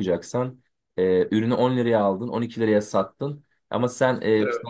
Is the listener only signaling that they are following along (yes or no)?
yes